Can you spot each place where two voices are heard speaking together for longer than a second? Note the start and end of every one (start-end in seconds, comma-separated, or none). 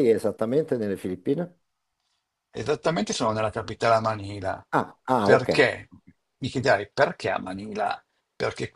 none